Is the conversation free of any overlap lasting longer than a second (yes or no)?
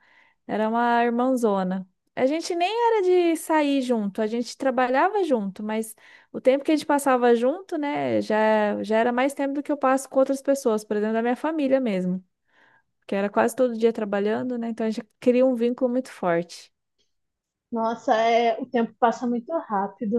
yes